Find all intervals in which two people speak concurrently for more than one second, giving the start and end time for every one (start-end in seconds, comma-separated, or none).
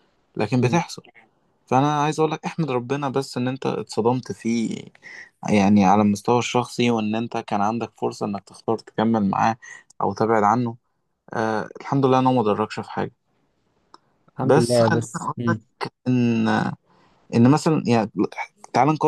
14.4-15.6